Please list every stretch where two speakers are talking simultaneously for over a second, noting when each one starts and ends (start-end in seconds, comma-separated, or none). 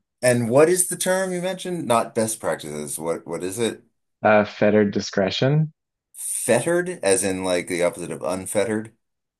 none